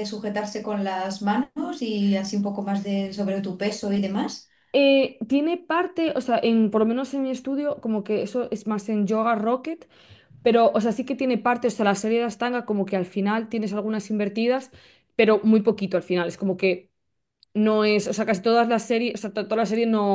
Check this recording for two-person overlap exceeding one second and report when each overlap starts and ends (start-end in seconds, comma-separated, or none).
none